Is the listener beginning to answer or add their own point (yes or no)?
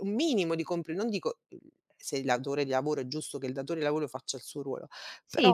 yes